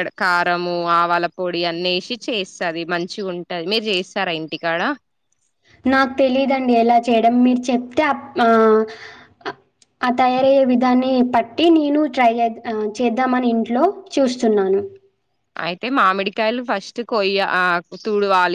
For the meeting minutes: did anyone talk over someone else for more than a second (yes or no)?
no